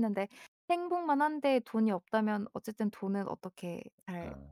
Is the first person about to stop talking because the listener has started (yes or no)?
no